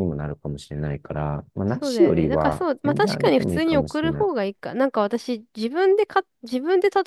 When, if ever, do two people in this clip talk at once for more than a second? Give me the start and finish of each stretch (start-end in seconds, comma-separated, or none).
1.7-4.2